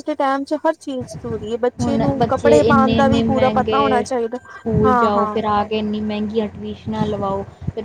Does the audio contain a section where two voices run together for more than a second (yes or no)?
yes